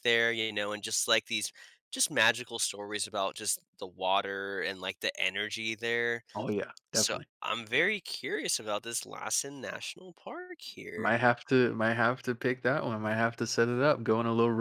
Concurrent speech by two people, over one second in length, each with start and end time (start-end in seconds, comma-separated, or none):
none